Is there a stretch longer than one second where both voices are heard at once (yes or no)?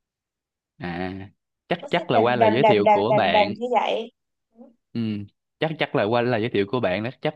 yes